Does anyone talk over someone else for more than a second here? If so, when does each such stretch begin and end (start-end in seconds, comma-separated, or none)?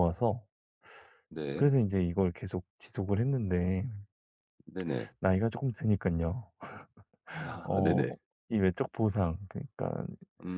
none